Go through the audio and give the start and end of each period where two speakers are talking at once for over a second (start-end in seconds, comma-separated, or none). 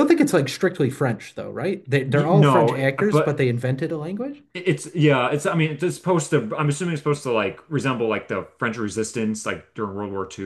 2.1-3.4